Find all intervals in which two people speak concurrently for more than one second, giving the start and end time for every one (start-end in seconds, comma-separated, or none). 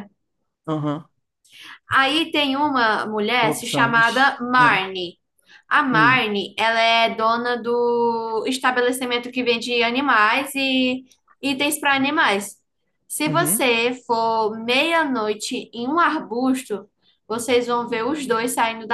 3.4-4.8